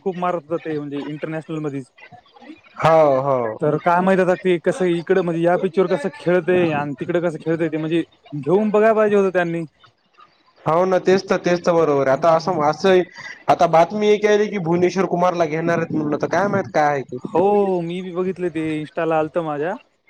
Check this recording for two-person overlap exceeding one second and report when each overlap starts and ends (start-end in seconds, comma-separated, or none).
none